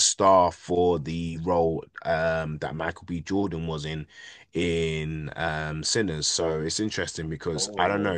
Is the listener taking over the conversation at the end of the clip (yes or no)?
no